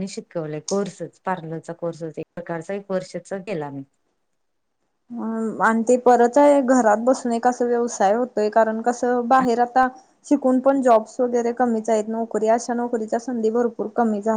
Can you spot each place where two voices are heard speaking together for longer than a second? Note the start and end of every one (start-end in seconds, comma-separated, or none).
none